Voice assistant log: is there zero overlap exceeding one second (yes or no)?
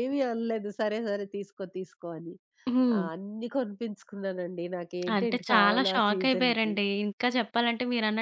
no